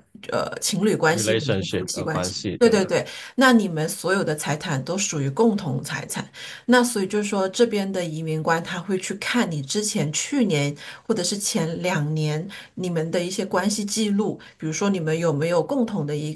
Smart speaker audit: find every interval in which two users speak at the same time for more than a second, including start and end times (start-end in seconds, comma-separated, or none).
1.1-2.9